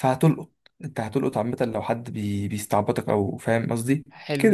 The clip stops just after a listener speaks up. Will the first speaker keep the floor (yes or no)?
no